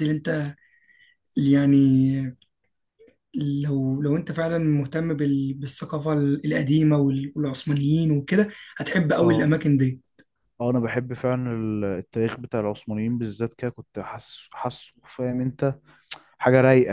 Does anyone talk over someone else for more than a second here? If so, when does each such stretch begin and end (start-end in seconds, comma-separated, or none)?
none